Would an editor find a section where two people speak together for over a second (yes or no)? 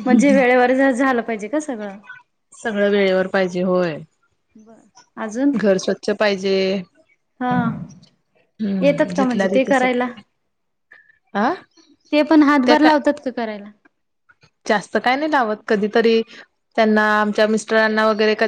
yes